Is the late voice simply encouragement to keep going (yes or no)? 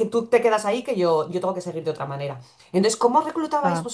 yes